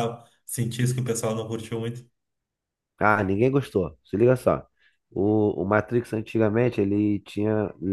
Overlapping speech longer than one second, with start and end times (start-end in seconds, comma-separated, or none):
none